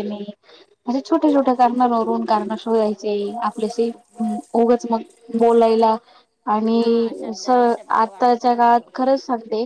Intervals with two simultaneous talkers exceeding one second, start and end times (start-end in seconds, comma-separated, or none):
6.8-8.9